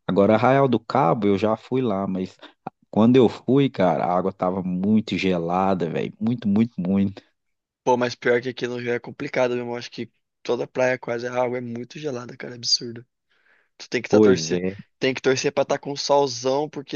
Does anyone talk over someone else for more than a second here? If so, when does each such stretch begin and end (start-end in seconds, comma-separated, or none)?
none